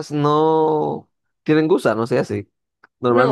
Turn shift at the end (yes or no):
yes